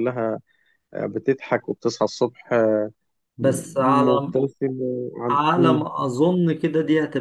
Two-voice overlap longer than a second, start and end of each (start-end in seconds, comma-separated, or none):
none